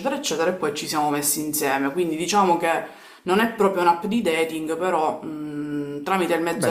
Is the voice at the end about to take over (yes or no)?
yes